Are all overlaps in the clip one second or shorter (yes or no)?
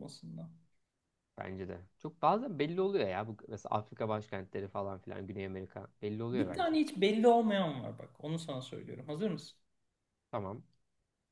yes